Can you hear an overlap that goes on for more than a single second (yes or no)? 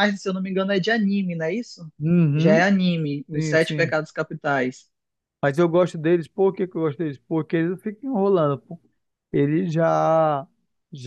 no